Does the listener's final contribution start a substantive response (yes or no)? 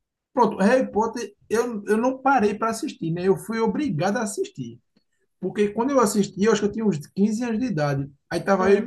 no